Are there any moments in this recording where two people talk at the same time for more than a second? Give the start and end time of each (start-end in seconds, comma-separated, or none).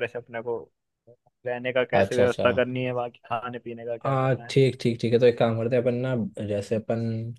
none